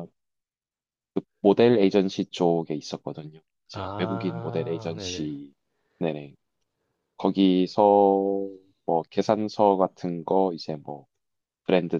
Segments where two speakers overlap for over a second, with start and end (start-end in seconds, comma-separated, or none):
3.7-5.3